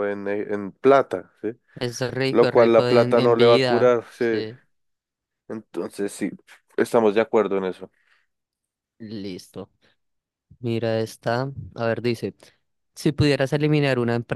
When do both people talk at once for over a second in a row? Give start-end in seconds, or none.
2.3-4.3